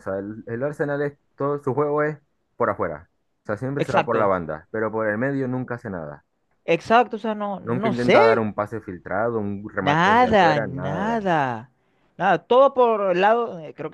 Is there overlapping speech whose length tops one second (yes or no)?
yes